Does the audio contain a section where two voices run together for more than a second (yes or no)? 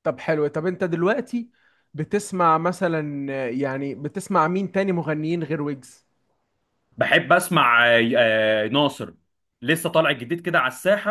no